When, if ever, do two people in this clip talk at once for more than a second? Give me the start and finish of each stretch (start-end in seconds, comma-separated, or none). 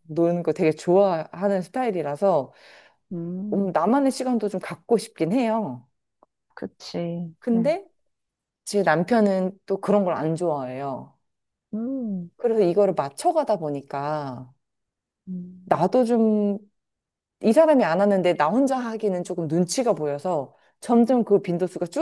none